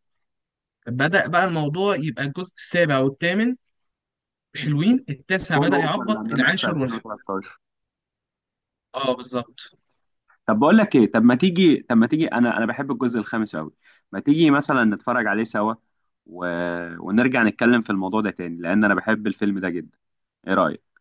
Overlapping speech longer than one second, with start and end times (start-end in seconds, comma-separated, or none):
5.5-7.1